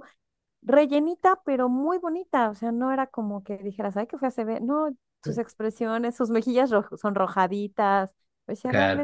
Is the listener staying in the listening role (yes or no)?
yes